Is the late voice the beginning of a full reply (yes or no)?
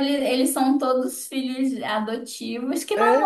no